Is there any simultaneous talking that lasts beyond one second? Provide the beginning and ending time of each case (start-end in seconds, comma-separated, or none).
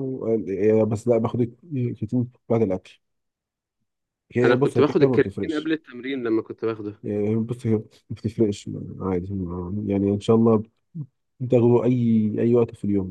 4.4-5.7